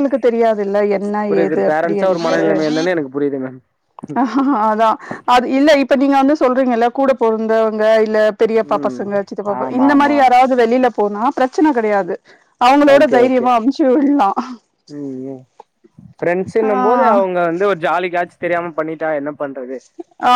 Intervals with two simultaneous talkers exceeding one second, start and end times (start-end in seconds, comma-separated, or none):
1.3-2.8